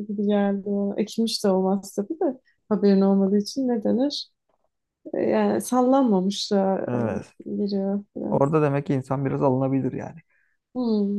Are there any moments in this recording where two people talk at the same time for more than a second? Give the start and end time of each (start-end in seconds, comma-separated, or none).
none